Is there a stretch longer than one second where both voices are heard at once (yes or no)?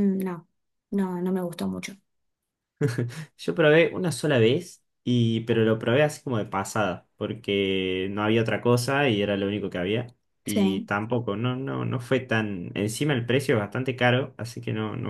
no